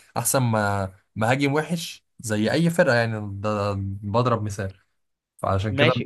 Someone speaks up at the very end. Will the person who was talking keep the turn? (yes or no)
no